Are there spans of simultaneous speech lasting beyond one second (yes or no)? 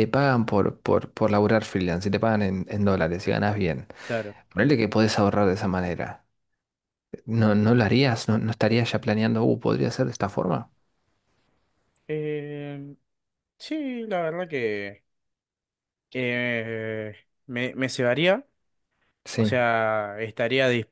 no